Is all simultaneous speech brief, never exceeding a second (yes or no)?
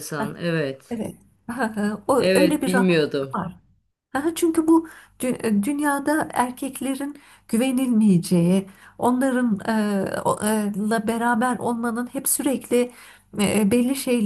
no